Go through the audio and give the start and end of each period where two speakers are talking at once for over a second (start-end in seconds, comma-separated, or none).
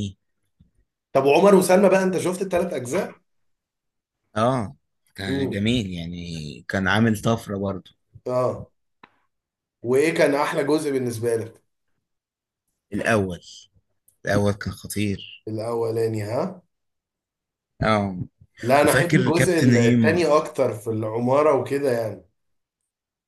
18.8-20.2